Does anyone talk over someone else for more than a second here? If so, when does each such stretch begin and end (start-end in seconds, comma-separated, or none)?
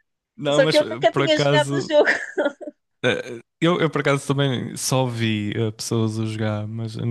0.5-2.0